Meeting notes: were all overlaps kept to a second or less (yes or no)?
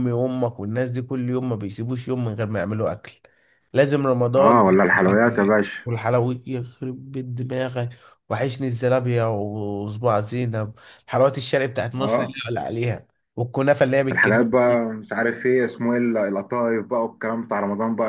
no